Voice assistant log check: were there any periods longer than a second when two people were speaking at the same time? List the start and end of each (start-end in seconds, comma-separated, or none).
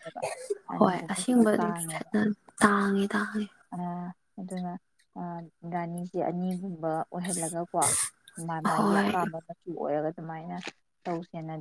0.8-2.1